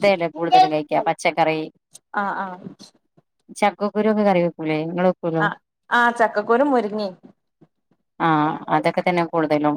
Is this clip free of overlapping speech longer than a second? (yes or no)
yes